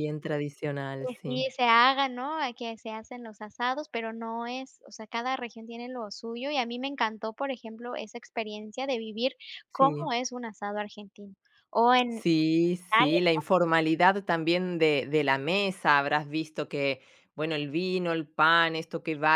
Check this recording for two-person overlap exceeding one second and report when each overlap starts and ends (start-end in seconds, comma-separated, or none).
none